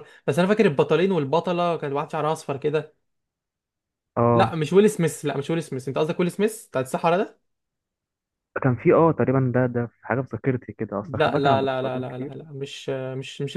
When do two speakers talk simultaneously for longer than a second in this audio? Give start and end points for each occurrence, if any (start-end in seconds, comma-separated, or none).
11.0-12.3